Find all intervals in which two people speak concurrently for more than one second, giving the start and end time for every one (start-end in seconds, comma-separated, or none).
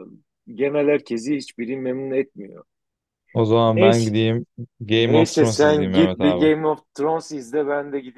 4.9-6.5